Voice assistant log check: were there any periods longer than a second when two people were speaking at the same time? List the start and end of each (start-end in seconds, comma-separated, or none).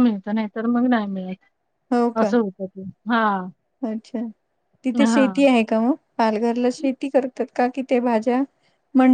none